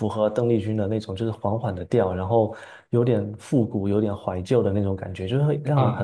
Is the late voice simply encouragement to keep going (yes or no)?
no